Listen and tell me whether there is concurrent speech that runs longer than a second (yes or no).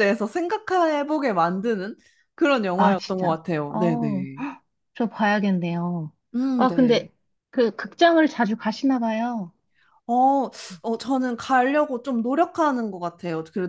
yes